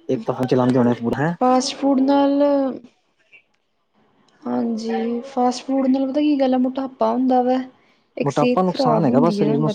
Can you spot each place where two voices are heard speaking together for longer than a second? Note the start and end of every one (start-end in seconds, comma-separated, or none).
none